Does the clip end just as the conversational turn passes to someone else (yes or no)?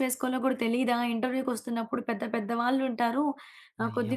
no